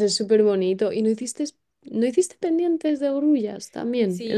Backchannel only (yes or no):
no